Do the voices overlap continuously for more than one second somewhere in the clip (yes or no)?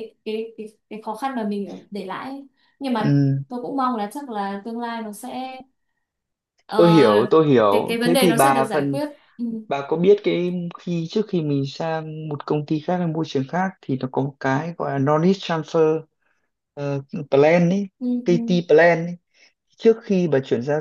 yes